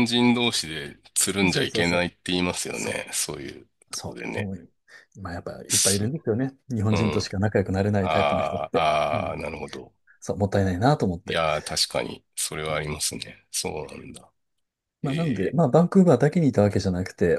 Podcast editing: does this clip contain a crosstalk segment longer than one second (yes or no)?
yes